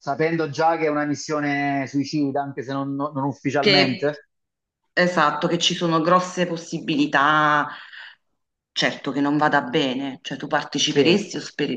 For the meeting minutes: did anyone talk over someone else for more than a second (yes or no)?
no